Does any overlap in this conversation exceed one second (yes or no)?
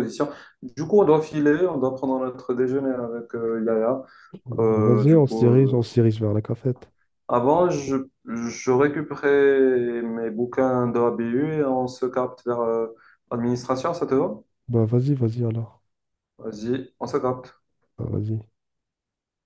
yes